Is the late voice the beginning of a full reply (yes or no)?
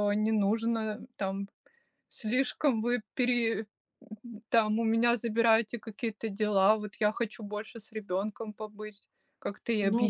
yes